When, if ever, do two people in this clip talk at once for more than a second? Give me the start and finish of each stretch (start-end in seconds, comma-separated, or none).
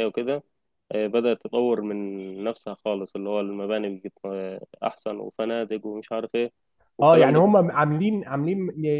none